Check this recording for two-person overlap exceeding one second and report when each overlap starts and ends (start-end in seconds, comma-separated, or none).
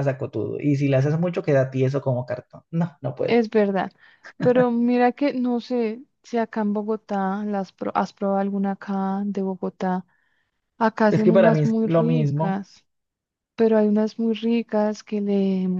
11.1-12.6